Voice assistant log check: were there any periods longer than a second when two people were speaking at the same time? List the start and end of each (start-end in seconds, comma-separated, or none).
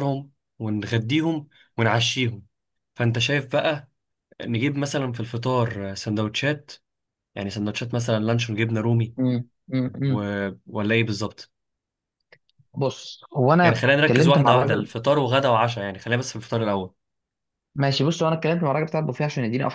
13.6-14.9